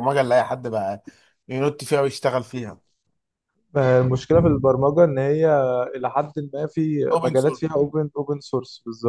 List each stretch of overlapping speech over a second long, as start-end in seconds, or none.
none